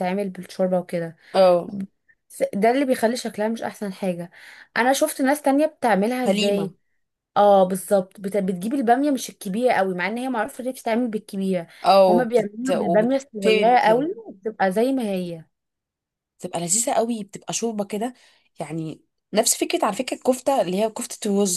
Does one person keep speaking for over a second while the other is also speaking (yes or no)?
yes